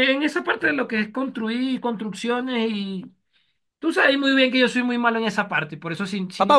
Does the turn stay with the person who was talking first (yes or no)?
no